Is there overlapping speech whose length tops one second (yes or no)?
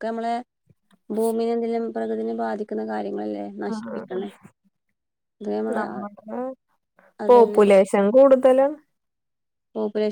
no